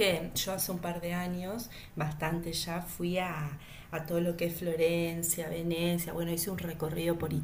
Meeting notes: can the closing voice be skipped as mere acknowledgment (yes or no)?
yes